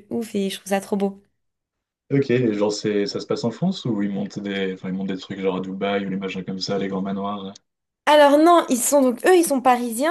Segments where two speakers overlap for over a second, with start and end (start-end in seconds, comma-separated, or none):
none